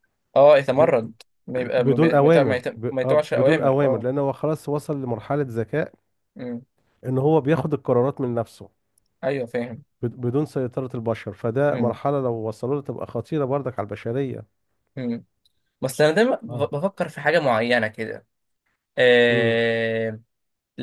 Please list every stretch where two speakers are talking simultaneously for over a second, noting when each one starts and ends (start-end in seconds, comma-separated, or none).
1.8-4.1